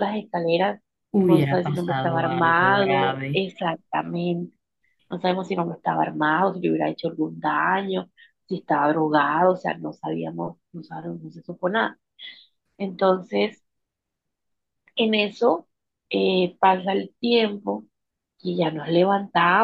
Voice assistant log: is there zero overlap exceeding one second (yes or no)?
no